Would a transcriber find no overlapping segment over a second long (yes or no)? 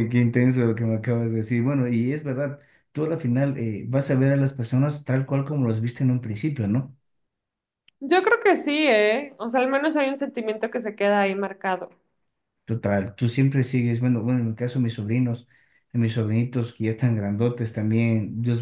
yes